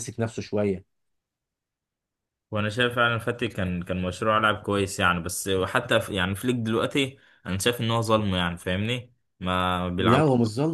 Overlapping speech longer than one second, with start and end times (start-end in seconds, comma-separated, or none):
none